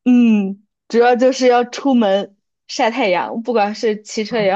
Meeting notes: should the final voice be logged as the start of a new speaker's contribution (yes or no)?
no